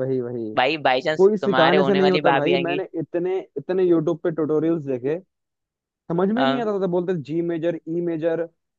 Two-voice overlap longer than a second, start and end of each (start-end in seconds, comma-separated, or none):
1.2-2.8